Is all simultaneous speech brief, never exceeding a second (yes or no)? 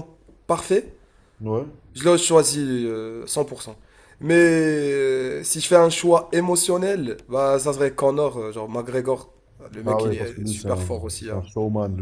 no